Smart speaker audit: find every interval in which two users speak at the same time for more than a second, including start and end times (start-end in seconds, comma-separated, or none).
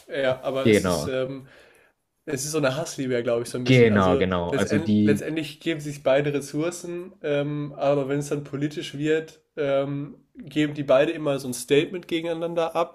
3.6-5.2